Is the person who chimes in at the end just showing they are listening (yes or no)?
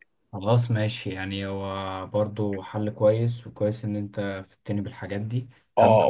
no